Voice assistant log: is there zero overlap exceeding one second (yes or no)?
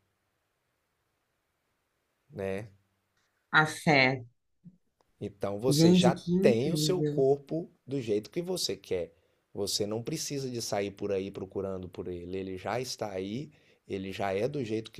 no